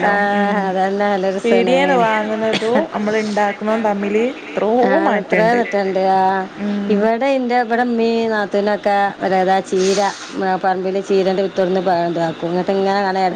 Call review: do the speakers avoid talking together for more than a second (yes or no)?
no